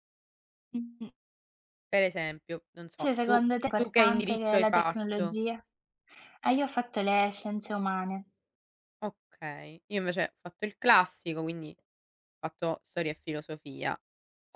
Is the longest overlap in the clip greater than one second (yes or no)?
yes